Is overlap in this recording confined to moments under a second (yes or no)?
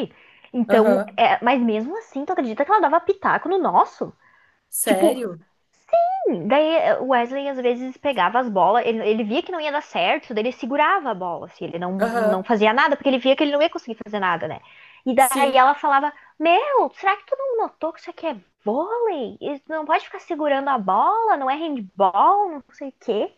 yes